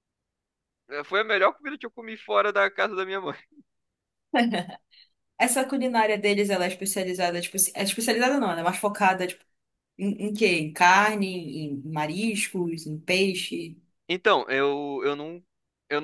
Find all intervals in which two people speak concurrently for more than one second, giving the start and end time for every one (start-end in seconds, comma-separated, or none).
none